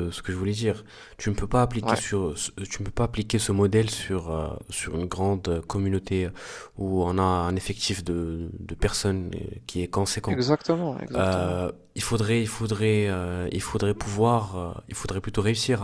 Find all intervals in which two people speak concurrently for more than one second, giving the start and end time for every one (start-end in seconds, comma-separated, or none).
none